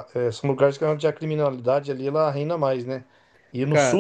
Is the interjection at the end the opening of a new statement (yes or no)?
no